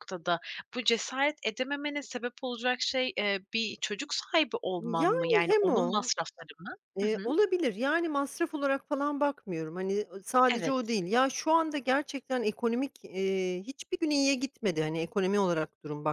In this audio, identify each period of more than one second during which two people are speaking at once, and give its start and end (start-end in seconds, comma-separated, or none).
4.8-6.1